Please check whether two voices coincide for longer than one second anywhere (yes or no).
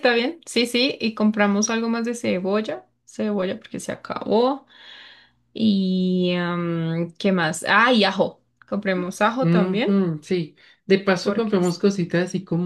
no